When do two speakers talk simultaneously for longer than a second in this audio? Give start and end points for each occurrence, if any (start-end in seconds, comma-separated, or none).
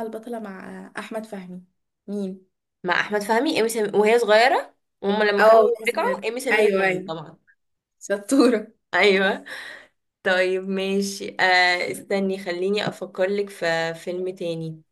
5.4-7.1